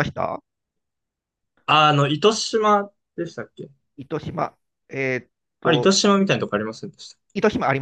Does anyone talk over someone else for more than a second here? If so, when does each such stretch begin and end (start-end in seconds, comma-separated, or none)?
none